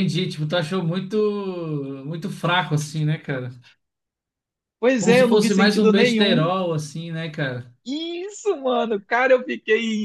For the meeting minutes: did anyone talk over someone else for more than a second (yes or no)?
yes